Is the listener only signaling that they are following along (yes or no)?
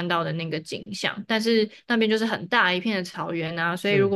yes